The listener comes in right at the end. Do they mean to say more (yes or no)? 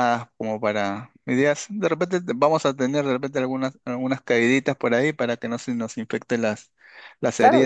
yes